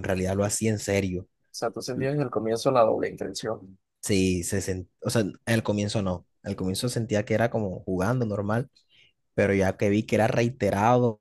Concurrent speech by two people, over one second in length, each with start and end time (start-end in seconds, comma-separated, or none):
none